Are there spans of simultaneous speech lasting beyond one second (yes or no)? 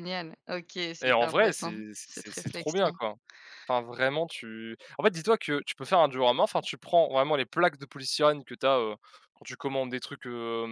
yes